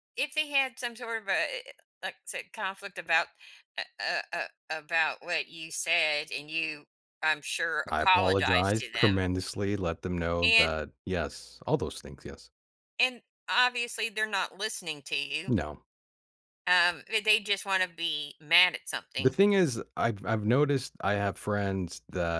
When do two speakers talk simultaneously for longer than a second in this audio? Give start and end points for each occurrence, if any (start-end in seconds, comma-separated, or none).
7.9-9.2